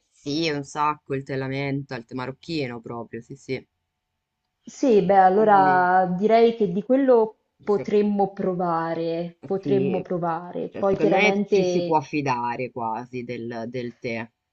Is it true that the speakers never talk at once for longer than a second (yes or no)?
no